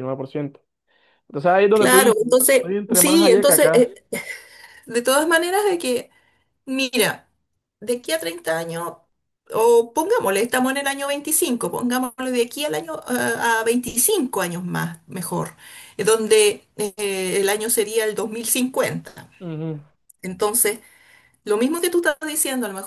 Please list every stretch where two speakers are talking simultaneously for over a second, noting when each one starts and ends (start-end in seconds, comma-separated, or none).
1.7-3.9